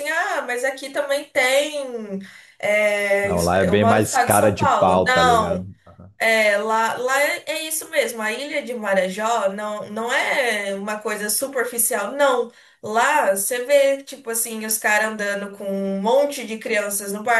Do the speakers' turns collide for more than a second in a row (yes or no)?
yes